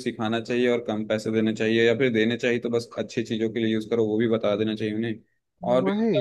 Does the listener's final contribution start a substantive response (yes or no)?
no